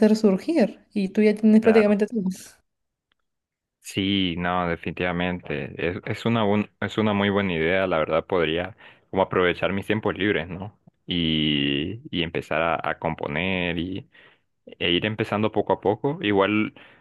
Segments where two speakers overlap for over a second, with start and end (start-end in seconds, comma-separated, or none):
none